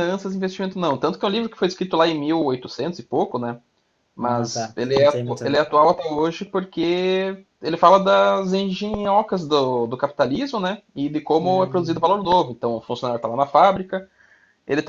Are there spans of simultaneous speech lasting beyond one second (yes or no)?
yes